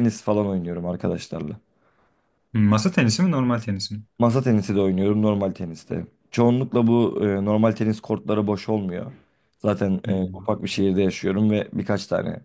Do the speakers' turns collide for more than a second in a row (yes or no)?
no